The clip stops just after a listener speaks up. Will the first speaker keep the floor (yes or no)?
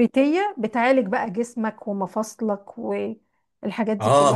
no